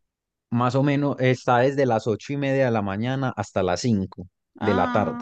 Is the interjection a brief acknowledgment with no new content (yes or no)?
no